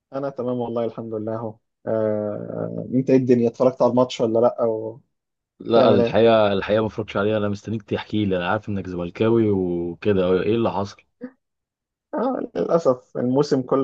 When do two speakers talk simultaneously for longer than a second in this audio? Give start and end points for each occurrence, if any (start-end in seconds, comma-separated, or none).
none